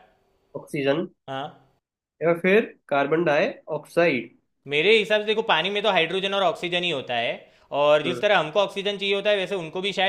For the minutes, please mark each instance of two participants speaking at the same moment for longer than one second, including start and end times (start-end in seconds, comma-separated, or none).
none